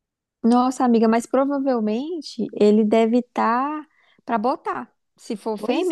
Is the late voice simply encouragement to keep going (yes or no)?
no